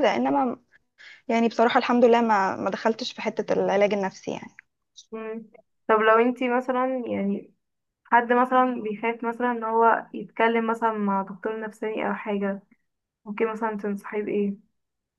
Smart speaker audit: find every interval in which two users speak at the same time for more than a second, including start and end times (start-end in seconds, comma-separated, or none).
none